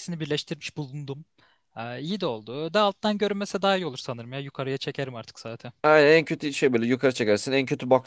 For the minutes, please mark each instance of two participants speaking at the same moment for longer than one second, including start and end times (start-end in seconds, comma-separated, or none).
none